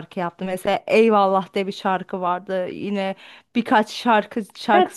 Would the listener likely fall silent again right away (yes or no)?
no